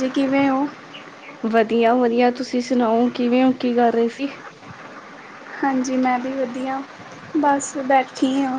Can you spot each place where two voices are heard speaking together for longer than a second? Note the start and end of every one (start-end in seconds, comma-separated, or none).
none